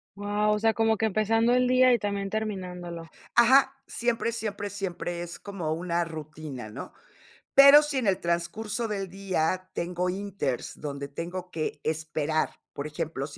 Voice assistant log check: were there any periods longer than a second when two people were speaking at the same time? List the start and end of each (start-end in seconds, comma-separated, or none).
none